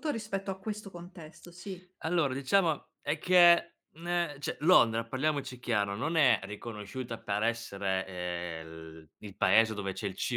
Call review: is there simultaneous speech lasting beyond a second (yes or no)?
no